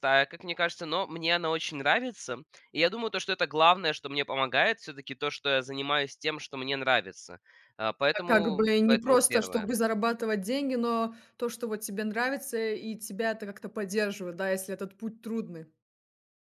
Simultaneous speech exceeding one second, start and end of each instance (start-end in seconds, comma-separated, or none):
8.1-9.7